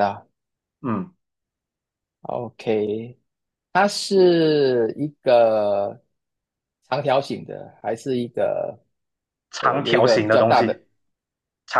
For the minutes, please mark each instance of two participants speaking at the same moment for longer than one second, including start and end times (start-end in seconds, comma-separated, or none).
9.6-10.8